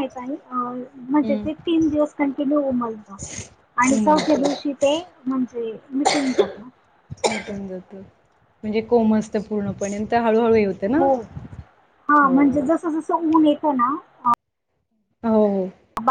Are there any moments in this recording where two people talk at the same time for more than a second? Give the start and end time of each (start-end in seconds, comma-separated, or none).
none